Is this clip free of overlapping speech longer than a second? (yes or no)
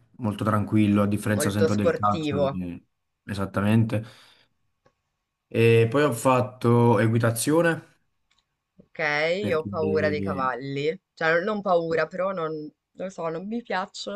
no